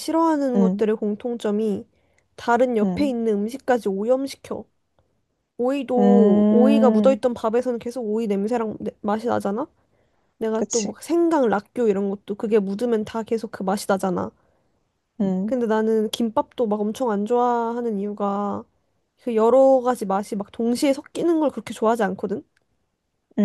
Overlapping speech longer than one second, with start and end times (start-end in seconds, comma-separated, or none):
6.0-7.2